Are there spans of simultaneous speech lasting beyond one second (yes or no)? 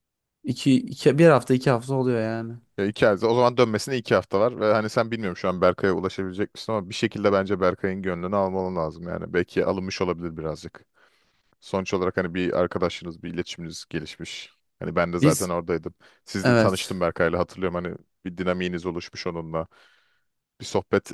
no